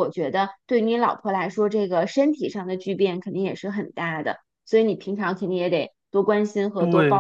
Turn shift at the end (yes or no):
yes